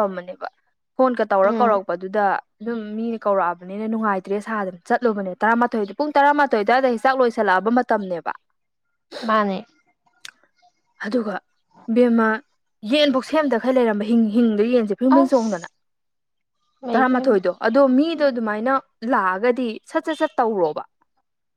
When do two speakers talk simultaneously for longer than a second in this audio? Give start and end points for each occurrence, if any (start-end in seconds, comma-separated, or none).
none